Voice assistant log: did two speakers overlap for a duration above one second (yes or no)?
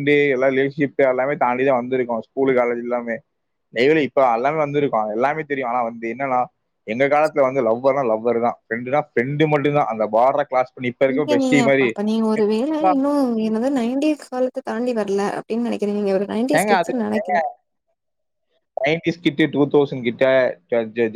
no